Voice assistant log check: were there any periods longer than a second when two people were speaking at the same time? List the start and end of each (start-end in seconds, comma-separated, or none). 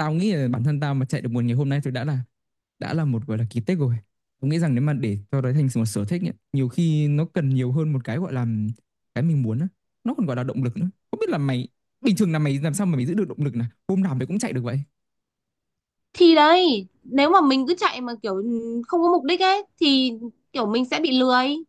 none